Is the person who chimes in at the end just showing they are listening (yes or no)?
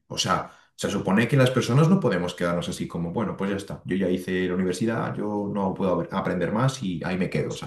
no